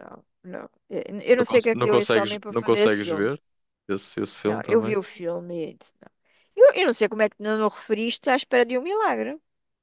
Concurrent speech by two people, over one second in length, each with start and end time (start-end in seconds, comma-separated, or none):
1.3-3.3